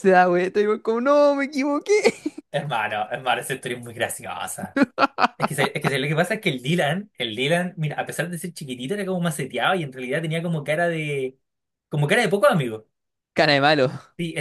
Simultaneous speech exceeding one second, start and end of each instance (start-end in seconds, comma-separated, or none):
none